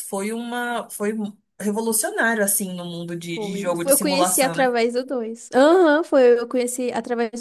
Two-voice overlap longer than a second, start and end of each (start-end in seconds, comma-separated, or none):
3.3-4.8